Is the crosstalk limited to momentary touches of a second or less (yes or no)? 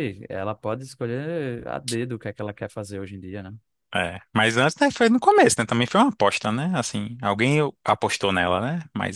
yes